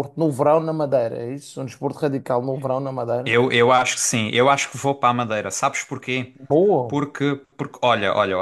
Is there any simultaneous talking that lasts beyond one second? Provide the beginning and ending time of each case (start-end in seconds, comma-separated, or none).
none